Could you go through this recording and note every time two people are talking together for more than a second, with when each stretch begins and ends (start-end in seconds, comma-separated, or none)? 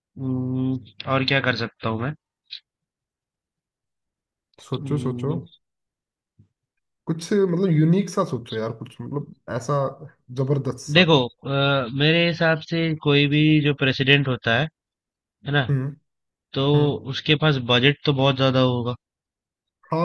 none